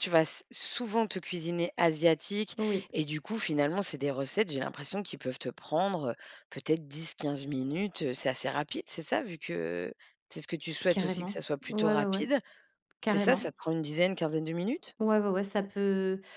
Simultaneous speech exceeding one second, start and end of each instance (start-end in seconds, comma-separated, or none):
10.9-12.3